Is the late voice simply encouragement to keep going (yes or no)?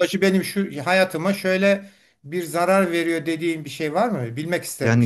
no